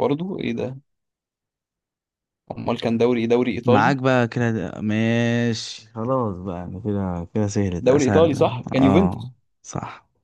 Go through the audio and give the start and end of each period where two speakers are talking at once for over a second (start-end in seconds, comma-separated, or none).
7.8-9.3